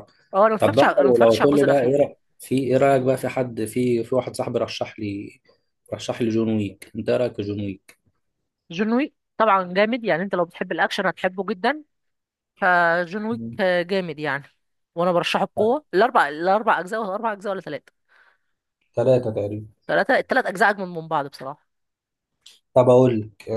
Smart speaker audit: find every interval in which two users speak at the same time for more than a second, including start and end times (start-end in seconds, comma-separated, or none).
0.6-2.0